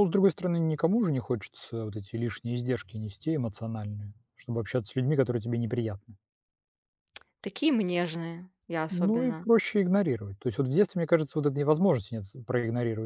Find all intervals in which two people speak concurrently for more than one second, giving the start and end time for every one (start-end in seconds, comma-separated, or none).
none